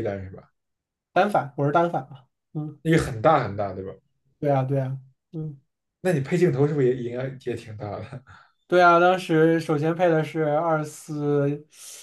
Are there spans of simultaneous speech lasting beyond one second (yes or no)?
no